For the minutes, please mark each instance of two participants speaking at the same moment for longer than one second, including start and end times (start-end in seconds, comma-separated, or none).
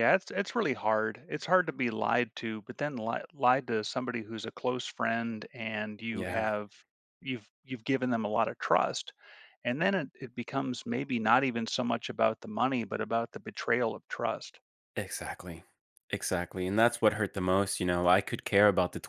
none